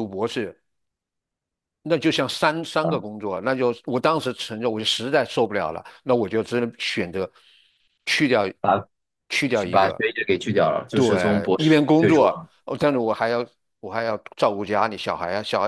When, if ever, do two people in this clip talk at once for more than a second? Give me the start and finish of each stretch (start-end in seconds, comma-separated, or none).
10.9-12.3